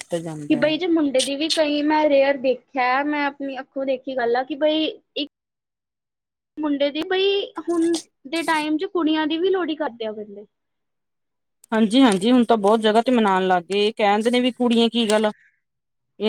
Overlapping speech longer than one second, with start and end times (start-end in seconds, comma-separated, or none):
none